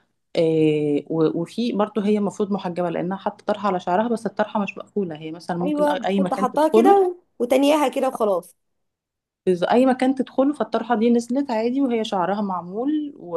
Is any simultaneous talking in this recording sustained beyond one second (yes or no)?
yes